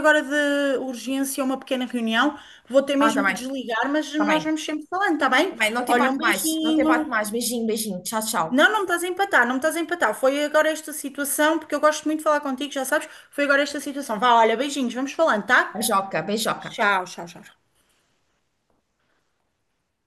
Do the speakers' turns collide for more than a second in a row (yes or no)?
yes